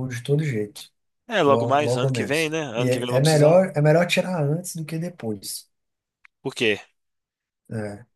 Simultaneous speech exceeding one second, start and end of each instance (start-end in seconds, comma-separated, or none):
1.4-3.6